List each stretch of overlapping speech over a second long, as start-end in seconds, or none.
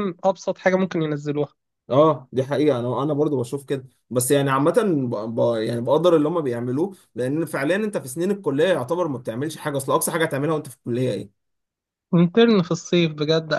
none